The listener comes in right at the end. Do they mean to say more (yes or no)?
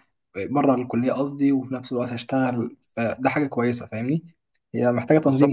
yes